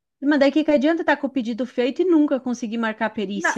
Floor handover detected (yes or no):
yes